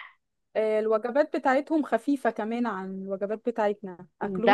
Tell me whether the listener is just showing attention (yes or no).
no